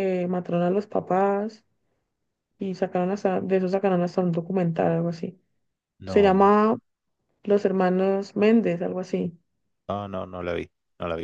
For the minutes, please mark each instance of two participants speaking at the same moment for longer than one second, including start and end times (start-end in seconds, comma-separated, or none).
none